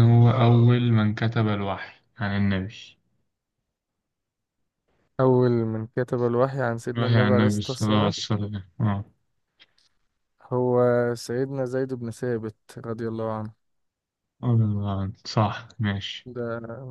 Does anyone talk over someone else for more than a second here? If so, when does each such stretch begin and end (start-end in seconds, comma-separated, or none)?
6.9-8.1